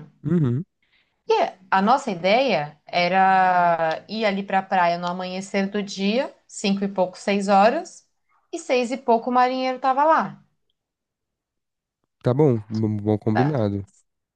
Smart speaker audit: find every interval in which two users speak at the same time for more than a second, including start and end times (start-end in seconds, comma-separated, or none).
none